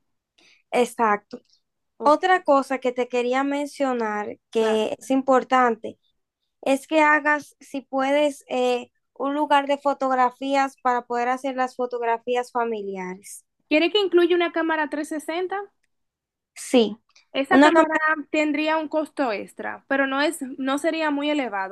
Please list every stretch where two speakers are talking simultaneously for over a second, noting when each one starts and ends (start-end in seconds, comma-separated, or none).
none